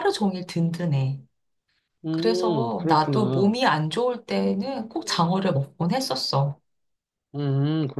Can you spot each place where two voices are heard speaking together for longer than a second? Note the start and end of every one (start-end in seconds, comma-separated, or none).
2.1-3.6